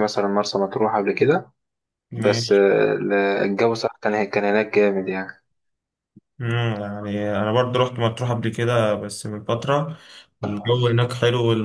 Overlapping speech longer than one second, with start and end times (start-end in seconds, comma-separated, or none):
none